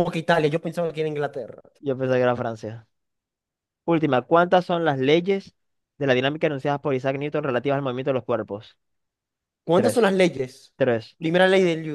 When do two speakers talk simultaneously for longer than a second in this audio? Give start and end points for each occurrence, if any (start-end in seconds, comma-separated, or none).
none